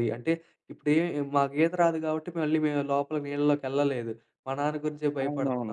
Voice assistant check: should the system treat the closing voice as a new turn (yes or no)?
no